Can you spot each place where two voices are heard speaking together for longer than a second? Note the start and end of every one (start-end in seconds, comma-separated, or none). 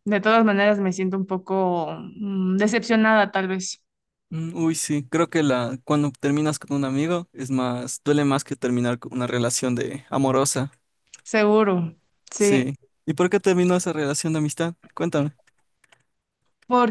none